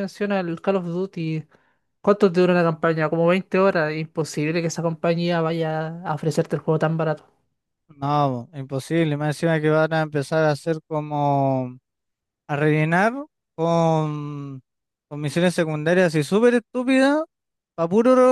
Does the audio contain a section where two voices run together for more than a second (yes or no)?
no